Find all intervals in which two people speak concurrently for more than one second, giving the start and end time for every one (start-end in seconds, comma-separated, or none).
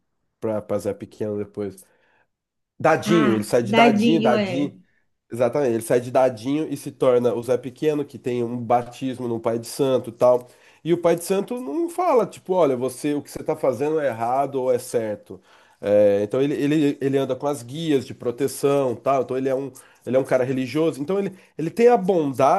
3.0-4.7